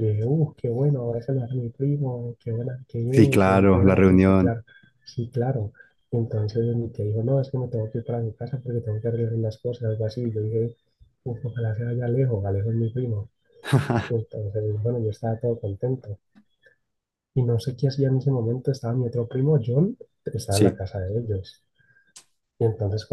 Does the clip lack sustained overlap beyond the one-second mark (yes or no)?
no